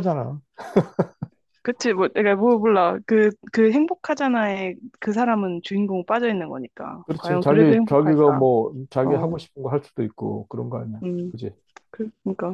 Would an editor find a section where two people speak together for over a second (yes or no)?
yes